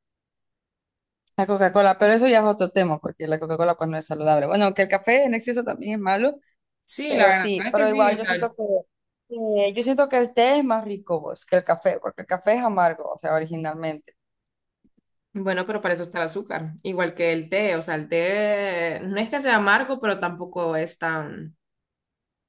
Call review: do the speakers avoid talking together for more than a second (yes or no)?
no